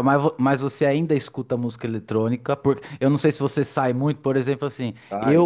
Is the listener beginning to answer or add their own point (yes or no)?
no